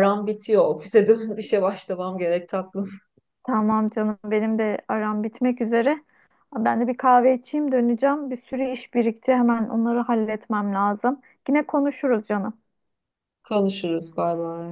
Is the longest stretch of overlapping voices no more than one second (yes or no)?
yes